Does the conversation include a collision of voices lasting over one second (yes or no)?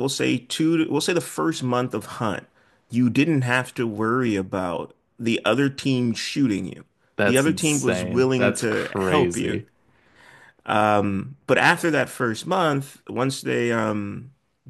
yes